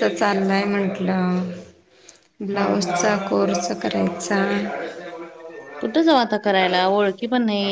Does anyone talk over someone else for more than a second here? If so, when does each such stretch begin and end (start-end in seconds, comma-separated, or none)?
none